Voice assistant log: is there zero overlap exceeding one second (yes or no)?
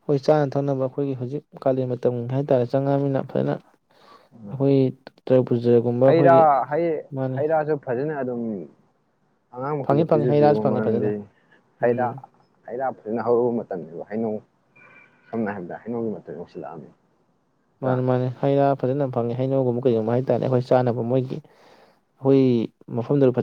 no